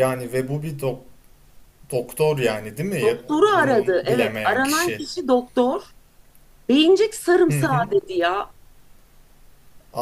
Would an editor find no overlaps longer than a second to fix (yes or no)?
no